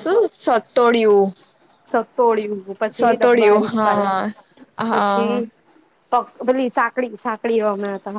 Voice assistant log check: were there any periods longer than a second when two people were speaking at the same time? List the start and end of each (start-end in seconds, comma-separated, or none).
none